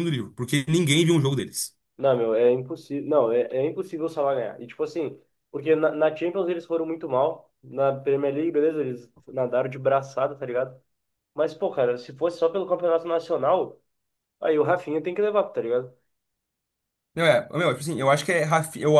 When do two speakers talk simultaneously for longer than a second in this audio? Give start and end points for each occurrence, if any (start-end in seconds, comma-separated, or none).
none